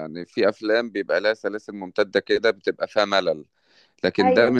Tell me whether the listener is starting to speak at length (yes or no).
no